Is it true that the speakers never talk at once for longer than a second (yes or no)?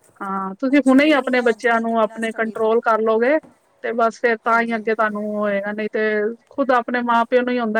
no